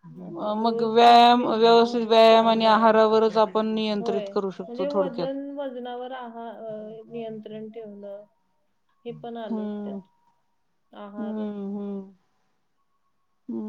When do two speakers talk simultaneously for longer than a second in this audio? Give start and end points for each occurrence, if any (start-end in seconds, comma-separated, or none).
0.7-2.9